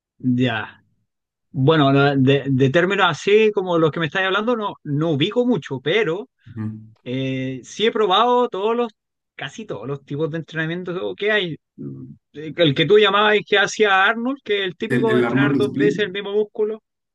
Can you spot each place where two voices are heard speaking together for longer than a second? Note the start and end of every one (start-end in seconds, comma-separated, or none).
14.9-16.1